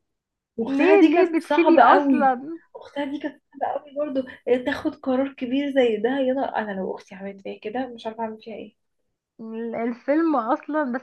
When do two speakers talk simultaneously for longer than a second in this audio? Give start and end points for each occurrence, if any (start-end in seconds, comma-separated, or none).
0.7-2.3